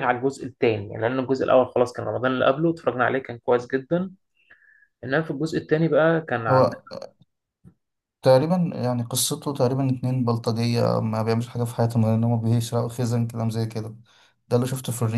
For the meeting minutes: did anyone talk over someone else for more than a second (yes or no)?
no